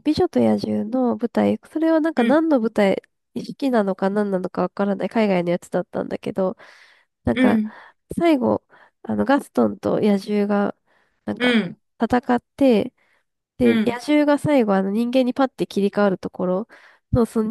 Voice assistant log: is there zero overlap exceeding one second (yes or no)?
yes